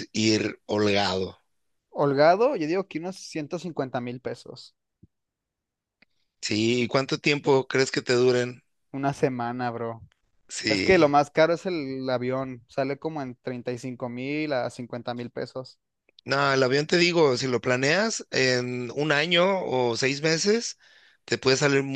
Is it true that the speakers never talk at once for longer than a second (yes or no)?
yes